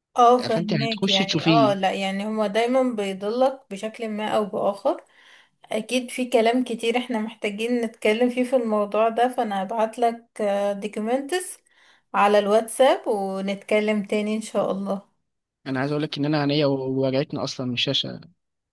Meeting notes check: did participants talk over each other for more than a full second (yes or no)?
yes